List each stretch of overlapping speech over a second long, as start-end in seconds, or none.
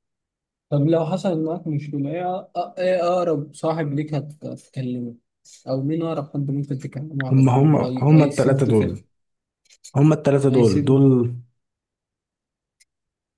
7.3-8.8